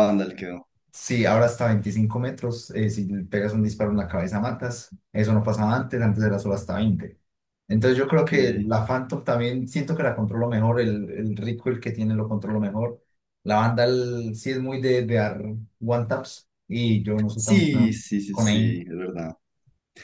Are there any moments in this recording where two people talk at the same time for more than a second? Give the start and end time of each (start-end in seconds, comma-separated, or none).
17.3-18.8